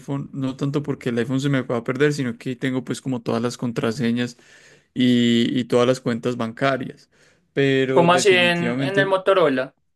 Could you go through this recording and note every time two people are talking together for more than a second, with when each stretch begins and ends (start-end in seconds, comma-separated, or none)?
7.9-9.2